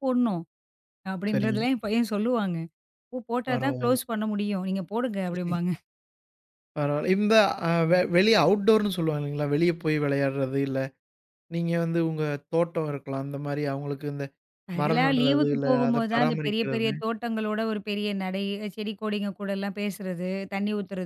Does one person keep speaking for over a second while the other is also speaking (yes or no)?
yes